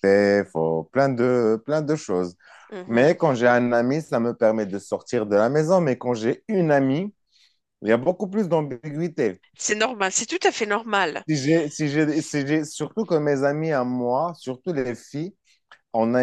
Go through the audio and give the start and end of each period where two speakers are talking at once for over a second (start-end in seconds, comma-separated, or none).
none